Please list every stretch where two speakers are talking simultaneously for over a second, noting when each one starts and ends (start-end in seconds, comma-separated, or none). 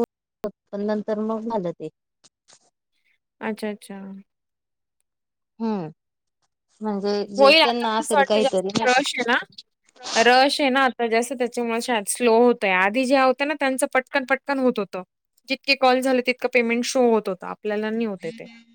7.4-9.0